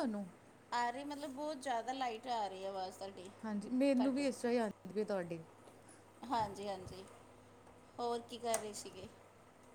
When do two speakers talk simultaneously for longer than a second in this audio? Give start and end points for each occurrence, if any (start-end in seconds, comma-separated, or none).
none